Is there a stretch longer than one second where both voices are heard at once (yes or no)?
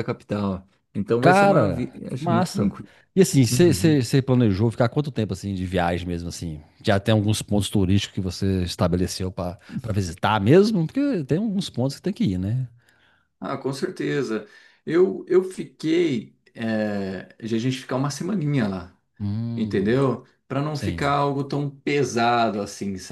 yes